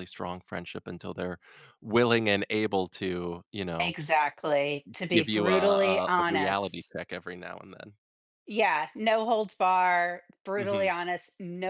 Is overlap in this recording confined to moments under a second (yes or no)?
no